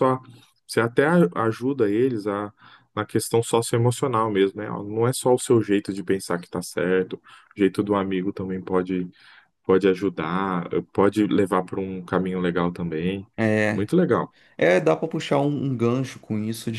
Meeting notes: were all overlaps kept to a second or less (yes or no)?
yes